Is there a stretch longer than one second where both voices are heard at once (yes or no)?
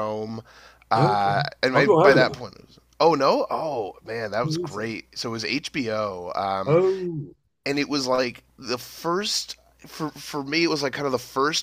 yes